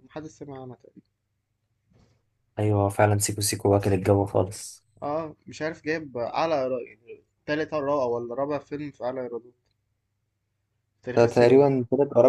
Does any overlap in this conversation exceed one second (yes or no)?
no